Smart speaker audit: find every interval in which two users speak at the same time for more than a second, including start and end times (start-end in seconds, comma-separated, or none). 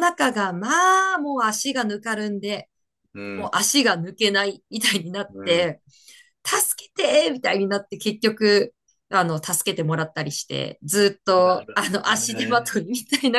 11.4-12.8